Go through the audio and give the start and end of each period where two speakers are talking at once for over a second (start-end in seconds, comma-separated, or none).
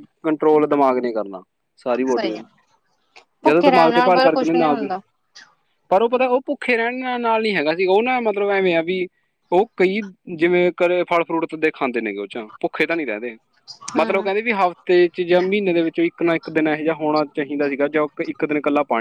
3.5-4.9